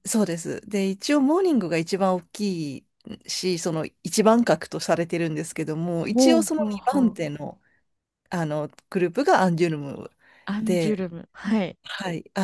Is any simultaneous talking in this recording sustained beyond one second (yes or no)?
yes